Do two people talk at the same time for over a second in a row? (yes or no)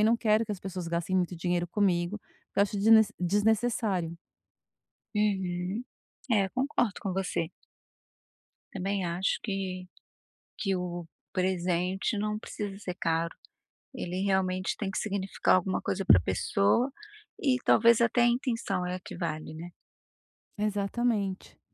no